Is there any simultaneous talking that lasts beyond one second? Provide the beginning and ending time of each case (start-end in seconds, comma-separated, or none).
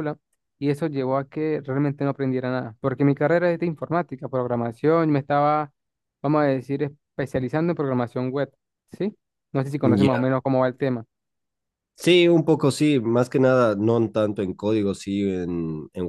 none